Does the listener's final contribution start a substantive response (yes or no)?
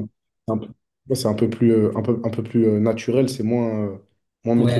yes